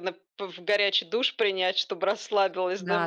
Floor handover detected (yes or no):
yes